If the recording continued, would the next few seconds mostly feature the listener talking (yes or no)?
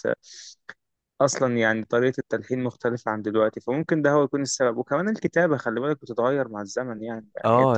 yes